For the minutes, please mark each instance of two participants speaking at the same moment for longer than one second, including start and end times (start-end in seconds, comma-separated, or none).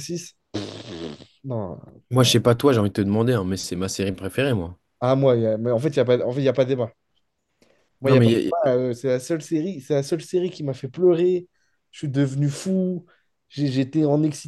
none